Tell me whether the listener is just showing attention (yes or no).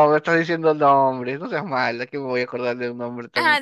no